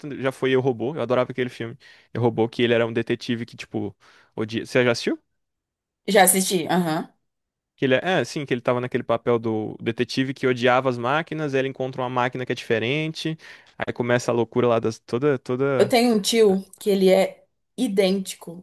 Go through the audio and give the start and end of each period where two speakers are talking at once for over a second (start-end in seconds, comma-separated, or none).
none